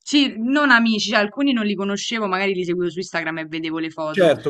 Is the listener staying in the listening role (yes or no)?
yes